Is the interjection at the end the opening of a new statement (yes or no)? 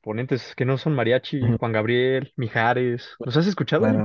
yes